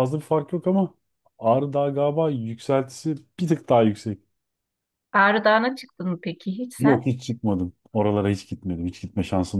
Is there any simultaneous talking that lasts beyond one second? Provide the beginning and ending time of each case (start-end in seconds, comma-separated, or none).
none